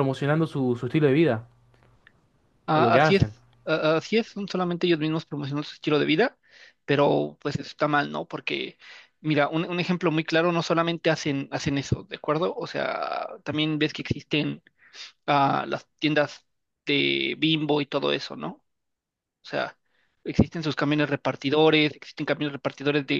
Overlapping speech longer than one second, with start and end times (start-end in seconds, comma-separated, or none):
none